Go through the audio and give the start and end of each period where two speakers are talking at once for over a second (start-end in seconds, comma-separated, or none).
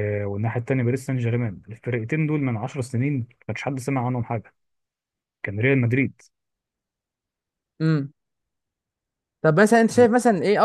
none